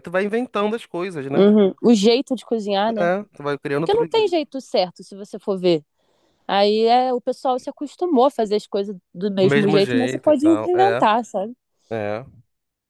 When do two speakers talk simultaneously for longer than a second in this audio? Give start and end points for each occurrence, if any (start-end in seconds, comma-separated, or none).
9.4-11.1